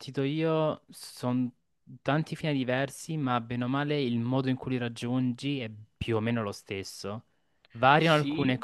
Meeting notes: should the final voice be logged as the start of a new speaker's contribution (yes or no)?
no